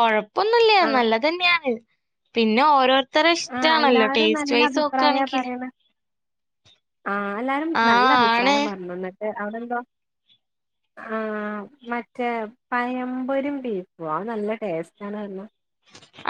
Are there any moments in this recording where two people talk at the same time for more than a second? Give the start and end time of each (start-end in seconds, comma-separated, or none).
3.5-5.4